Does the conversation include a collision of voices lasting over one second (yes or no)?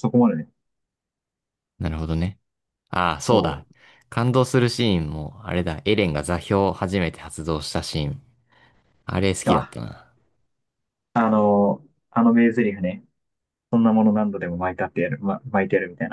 no